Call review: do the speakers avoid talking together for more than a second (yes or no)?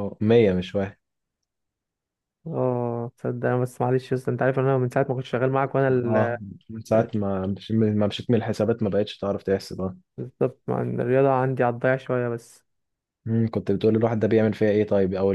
yes